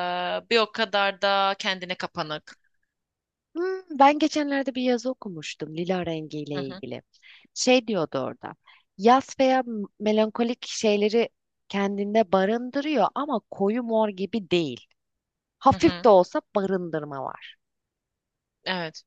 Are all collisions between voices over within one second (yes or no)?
yes